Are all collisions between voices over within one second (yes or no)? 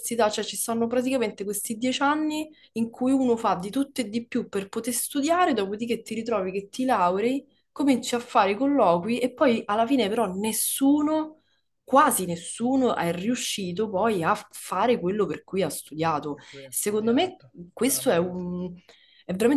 no